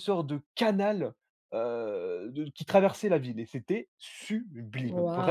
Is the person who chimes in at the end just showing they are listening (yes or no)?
no